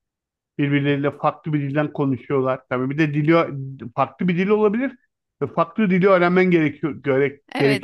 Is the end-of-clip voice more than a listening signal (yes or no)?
yes